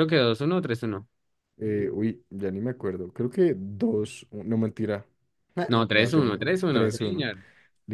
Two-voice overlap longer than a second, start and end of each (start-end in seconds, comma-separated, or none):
5.7-7.3